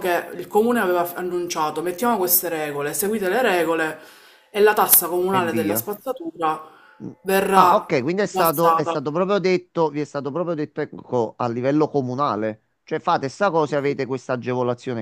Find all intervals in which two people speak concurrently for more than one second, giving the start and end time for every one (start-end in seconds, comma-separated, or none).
7.6-9.0